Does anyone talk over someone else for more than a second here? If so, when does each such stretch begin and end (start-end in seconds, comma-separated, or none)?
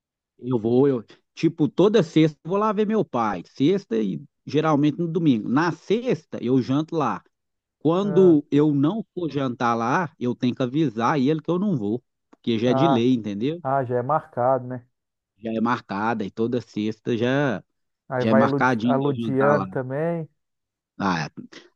18.2-19.6